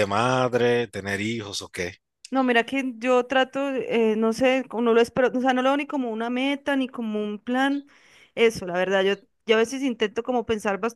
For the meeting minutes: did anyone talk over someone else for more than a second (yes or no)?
no